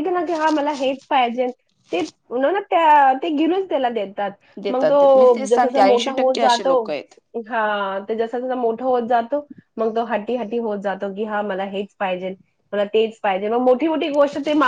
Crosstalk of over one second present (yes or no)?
yes